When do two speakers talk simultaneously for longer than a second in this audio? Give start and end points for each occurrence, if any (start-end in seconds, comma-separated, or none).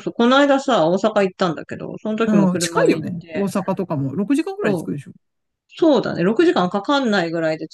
2.2-3.5